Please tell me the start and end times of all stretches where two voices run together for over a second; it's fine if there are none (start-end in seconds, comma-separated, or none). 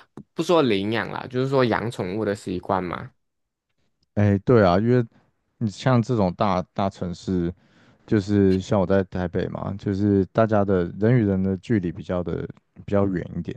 none